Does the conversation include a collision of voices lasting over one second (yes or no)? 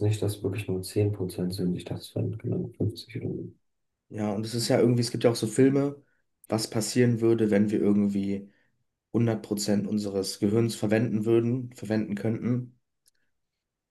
no